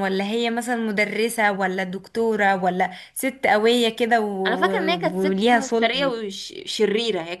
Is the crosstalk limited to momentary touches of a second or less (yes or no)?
no